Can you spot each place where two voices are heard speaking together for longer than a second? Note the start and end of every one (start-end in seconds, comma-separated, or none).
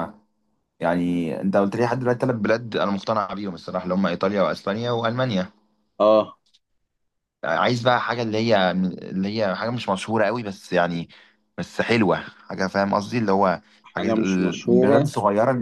13.8-15.1